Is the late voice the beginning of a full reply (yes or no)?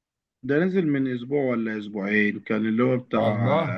no